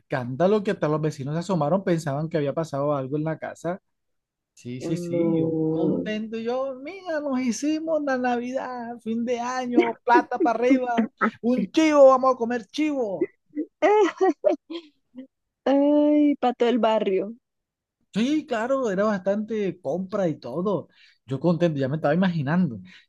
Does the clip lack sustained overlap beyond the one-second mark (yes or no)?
no